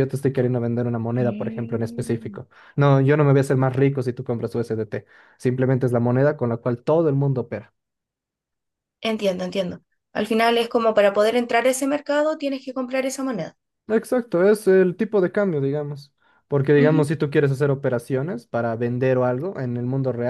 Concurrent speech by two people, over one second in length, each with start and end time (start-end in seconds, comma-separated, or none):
1.2-2.4